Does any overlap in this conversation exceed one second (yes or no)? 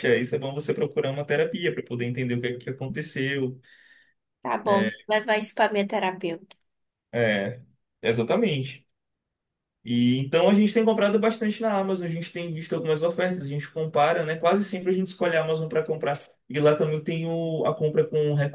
no